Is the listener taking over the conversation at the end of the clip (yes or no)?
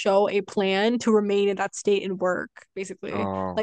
no